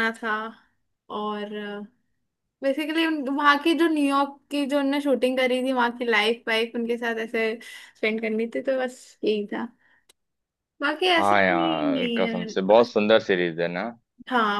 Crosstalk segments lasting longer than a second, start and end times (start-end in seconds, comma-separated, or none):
11.2-12.9